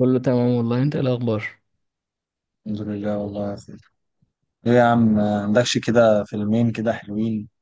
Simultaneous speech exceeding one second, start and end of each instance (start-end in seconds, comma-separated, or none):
none